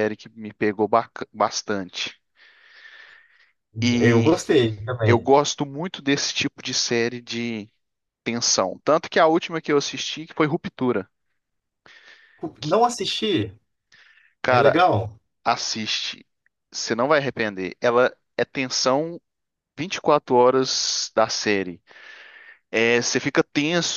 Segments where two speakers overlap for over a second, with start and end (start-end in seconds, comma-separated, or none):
none